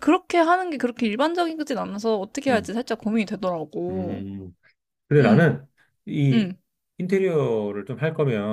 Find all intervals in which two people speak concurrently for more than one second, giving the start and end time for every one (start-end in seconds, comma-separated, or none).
none